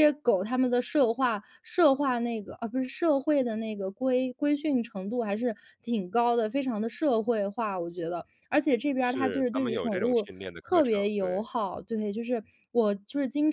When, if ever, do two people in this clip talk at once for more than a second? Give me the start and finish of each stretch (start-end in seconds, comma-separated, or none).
9.0-11.5